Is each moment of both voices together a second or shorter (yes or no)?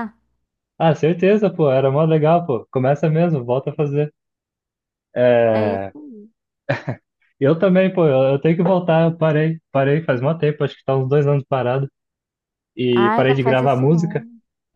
no